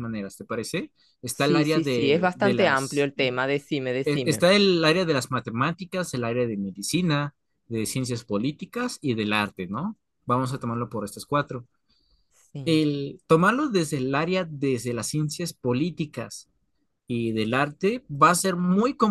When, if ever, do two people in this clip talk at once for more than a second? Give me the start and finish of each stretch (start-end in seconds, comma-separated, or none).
1.3-3.1